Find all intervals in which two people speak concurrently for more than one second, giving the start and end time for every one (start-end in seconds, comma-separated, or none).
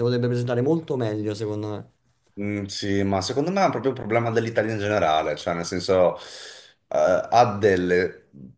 none